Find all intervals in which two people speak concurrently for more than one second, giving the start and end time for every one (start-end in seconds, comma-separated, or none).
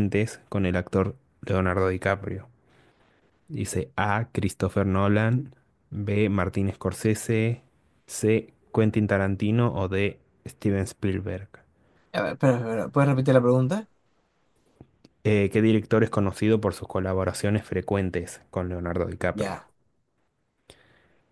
none